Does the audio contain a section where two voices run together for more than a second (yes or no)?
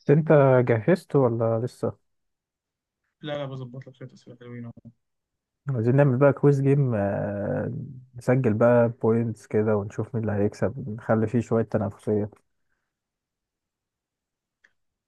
no